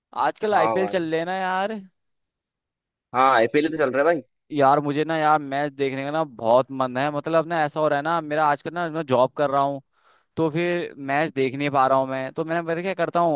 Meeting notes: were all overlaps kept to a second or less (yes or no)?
yes